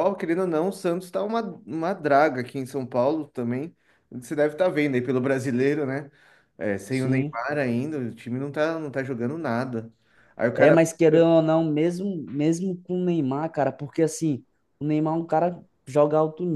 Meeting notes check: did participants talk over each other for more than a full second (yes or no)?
no